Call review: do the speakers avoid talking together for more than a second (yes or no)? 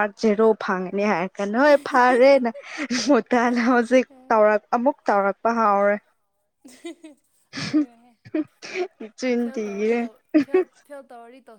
yes